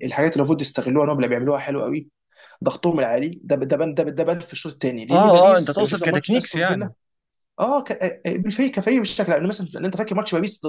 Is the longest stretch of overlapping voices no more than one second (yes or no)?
no